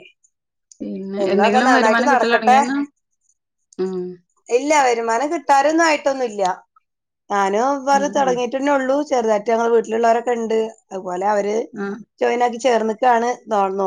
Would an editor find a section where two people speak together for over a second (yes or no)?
yes